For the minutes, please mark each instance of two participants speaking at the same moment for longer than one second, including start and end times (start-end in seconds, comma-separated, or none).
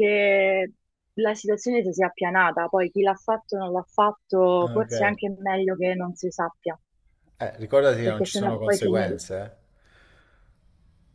8.0-9.2